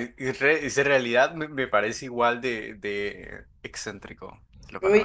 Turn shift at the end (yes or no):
yes